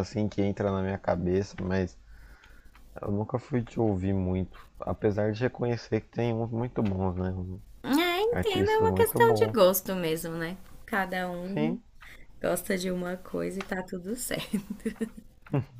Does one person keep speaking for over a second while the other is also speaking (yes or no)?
yes